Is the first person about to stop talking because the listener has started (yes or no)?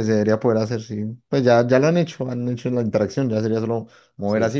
no